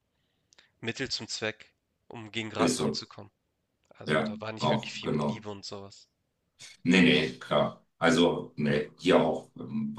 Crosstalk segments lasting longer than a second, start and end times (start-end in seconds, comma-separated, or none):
4.0-5.4